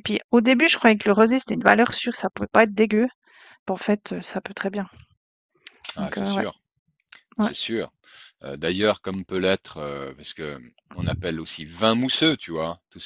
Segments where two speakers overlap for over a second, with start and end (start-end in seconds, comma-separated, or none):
none